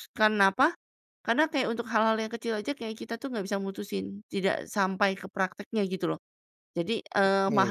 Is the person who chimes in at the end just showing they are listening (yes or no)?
yes